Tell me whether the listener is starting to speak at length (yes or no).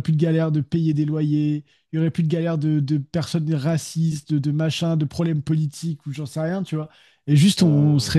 no